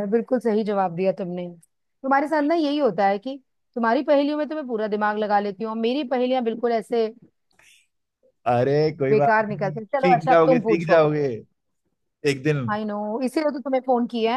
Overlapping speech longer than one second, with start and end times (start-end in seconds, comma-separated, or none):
9.1-11.0